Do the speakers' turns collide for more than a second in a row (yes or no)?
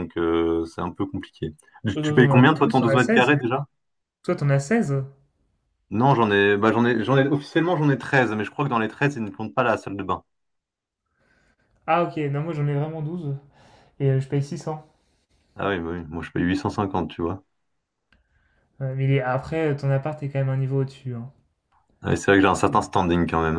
yes